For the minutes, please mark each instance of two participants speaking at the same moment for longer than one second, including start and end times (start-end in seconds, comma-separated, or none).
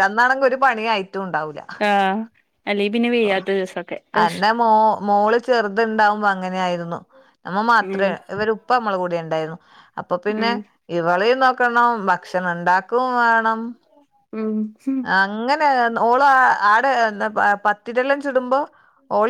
none